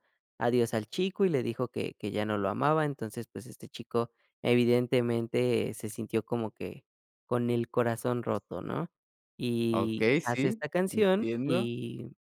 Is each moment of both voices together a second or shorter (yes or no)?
no